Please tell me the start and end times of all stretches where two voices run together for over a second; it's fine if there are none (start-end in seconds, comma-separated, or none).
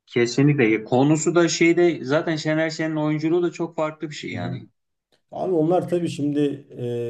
none